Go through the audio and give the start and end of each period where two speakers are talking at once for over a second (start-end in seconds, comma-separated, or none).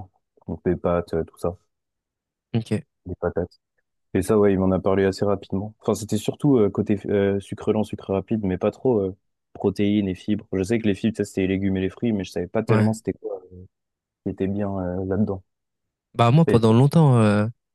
none